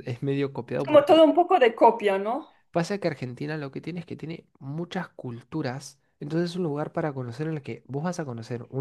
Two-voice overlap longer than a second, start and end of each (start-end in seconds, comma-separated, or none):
none